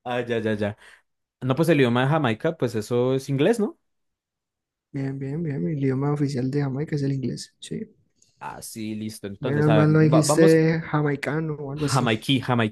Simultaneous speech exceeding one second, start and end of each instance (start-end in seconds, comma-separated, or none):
9.4-10.6